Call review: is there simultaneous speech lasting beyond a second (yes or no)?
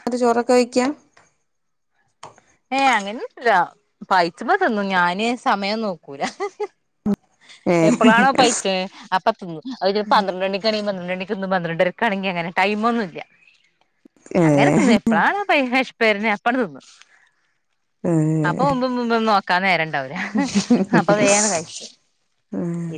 no